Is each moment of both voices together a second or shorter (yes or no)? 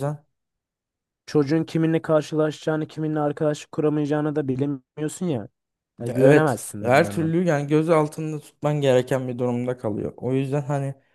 no